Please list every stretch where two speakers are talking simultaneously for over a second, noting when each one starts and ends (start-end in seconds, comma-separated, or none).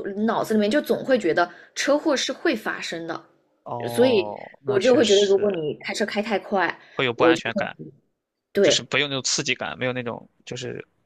3.9-5.6